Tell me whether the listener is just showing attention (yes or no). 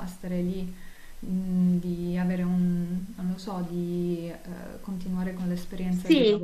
no